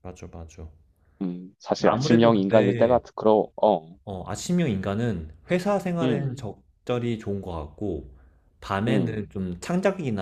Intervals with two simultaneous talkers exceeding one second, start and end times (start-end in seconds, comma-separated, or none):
1.8-3.0